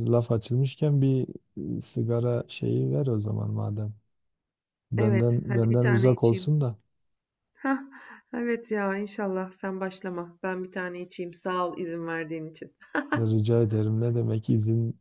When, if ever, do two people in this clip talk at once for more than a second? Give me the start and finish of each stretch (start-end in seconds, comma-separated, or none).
5.0-6.5